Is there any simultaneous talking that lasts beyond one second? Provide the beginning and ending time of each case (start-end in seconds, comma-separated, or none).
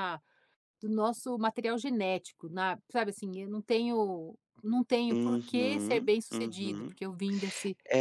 5.1-7.0